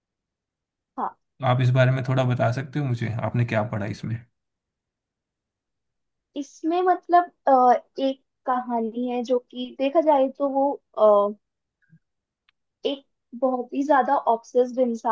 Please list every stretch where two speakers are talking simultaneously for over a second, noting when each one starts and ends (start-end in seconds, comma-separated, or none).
none